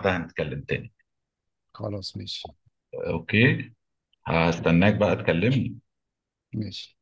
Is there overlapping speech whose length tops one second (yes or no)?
no